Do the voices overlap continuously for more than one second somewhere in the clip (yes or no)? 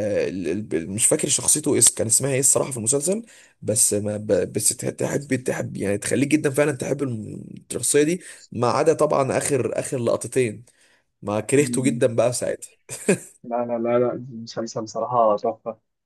no